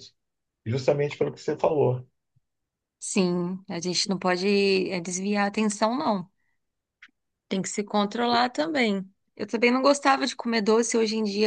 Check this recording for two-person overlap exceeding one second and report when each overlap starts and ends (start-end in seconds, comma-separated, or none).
none